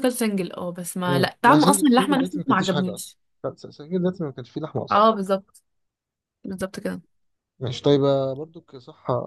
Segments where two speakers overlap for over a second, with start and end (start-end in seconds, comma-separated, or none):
1.1-3.2